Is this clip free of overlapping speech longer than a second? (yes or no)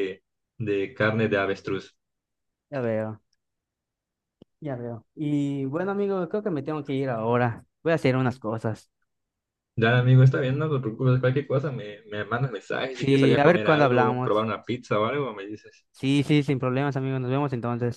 no